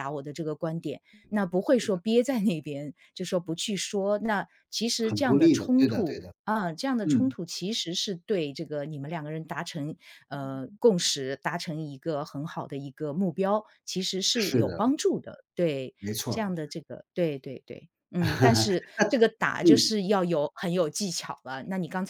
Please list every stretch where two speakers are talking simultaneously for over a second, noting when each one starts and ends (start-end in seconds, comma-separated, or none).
5.0-6.3